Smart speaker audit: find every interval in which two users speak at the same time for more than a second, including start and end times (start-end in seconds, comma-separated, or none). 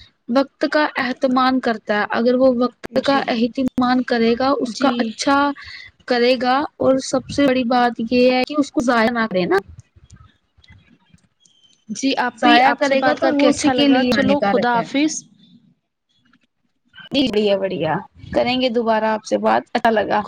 12.4-14.8